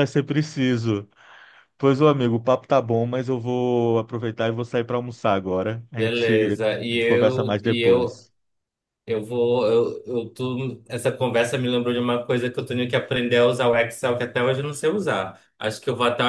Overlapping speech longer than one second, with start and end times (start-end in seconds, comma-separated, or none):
6.0-8.2